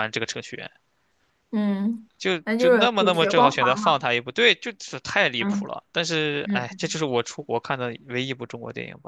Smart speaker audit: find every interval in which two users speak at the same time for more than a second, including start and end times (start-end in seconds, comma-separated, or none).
2.4-4.0